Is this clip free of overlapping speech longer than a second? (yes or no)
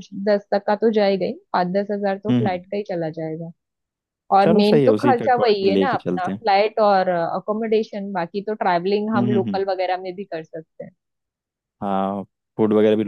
no